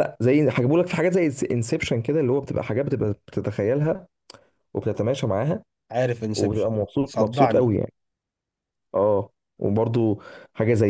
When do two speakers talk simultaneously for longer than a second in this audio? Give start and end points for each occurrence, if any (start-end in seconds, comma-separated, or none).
6.3-7.7